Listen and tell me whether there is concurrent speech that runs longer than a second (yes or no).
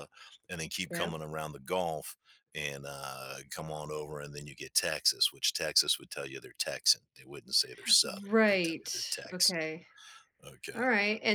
yes